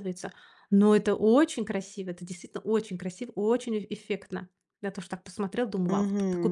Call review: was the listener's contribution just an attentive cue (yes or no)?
no